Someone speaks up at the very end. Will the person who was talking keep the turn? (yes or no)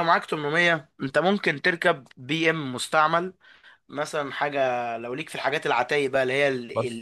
yes